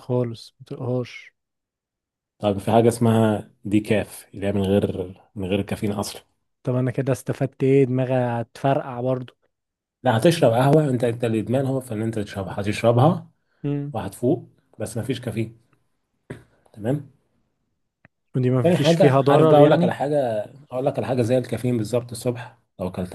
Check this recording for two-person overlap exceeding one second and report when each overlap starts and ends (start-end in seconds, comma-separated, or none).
18.6-20.0